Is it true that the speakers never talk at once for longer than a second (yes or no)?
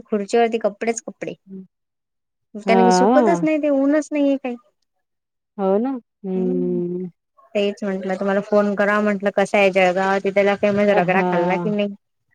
yes